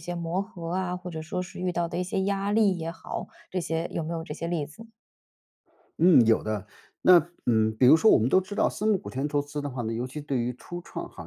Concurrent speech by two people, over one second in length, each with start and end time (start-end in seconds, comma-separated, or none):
none